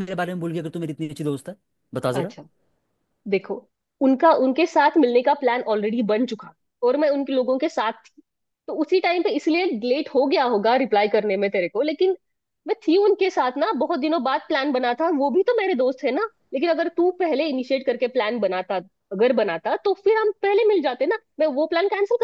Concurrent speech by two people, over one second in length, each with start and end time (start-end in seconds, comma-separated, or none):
none